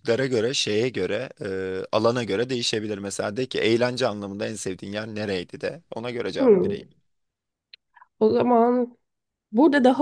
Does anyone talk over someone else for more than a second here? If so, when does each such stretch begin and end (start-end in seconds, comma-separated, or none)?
none